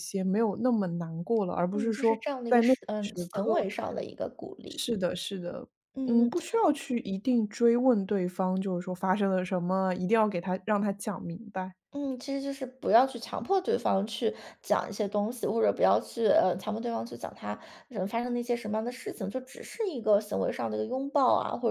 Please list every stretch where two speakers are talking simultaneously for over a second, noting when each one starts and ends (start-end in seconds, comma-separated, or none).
1.7-3.6